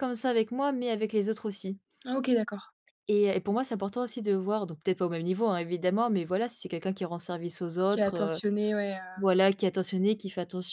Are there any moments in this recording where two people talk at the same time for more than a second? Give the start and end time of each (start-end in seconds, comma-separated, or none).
none